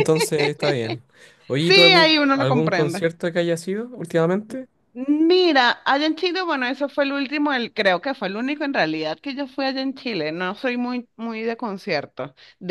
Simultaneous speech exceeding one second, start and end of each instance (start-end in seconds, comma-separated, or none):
1.6-3.1